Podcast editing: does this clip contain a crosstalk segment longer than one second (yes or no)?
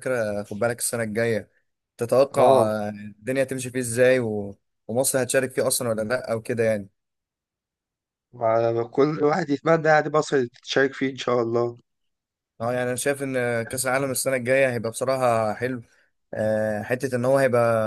no